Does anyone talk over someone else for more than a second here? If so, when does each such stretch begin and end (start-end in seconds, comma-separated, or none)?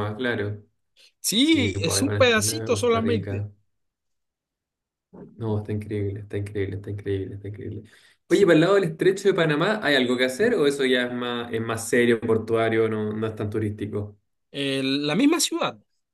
1.3-3.5